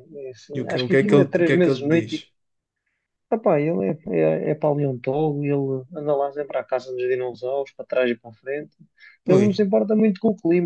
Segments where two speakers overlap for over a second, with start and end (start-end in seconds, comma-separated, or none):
0.6-2.1